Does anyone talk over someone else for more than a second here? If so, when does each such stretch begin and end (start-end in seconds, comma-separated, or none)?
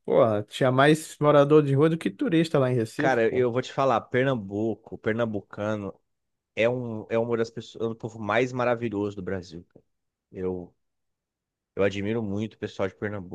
none